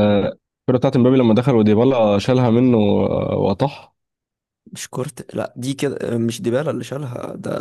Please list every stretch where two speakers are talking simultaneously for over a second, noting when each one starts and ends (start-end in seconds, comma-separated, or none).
none